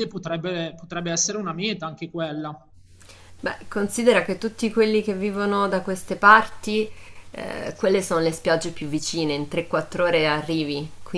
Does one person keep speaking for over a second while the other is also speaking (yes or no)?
no